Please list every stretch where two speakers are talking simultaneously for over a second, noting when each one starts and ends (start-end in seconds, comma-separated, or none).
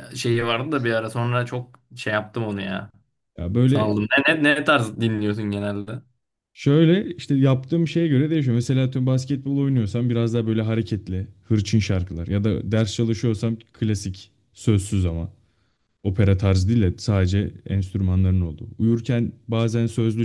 none